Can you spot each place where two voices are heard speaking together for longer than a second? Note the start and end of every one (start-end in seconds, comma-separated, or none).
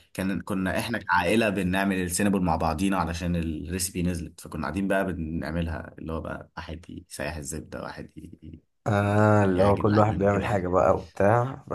9.0-10.7